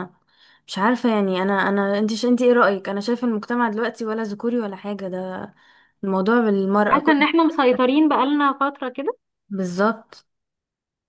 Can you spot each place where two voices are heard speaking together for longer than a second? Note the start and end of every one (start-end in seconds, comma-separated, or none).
none